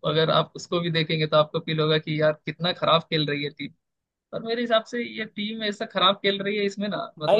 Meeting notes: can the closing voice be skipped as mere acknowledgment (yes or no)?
yes